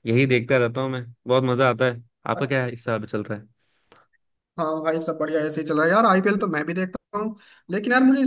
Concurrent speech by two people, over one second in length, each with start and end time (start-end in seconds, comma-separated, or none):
none